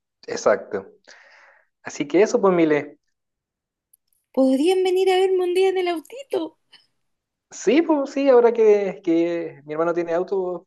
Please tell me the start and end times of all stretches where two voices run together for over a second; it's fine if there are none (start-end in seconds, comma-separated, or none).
none